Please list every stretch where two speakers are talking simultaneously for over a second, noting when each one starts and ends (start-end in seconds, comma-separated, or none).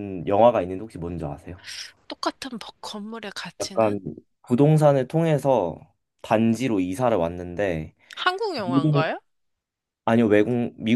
none